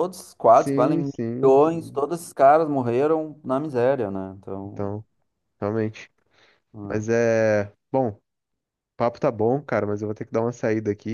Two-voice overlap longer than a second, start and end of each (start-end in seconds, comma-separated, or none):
0.5-2.0